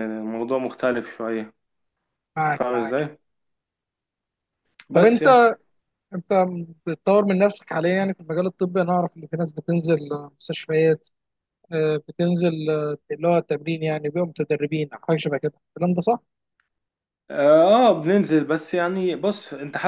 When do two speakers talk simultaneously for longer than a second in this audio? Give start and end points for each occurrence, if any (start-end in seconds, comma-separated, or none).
none